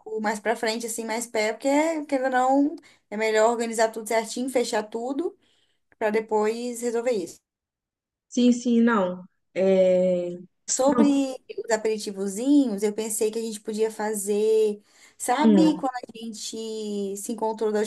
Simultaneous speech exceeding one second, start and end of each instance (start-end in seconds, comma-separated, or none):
none